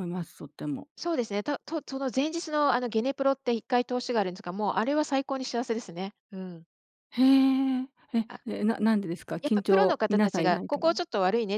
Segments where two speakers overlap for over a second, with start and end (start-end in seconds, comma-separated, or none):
9.4-10.9